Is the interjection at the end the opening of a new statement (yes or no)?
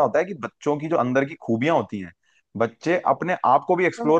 no